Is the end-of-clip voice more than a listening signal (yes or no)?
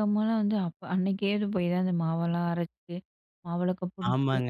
yes